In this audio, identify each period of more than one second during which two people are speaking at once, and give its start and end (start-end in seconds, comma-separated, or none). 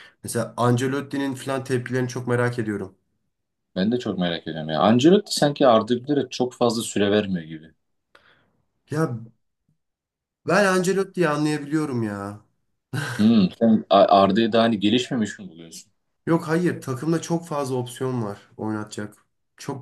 none